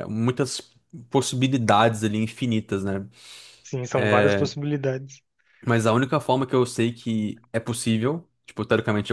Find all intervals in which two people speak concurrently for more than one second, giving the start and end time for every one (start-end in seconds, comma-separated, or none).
none